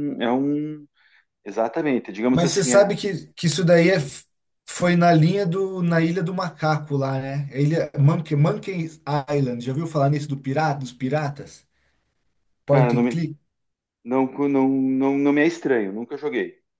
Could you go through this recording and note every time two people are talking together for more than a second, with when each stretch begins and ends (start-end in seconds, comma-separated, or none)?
none